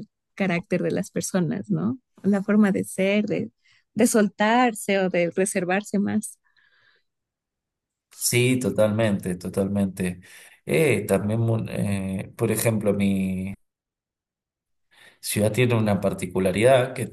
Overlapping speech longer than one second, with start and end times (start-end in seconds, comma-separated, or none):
none